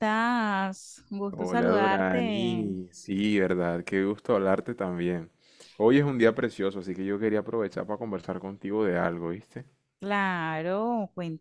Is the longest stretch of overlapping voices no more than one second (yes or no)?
no